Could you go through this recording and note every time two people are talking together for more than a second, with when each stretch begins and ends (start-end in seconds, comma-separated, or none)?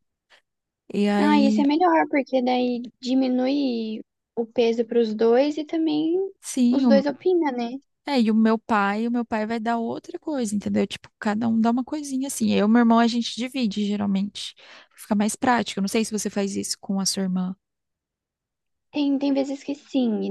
none